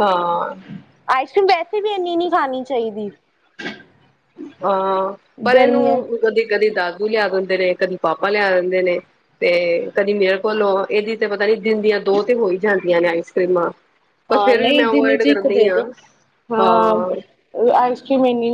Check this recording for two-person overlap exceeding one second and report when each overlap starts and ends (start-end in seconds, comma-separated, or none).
none